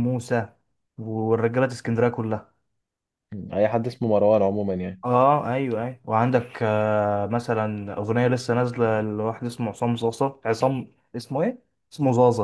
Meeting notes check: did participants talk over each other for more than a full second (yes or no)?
no